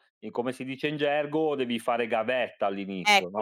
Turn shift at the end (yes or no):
yes